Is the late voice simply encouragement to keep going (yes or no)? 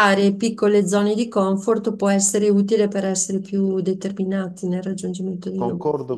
no